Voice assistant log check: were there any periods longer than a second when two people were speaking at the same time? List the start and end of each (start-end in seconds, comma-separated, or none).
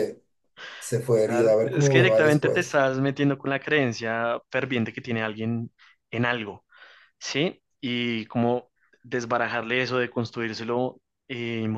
1.2-2.8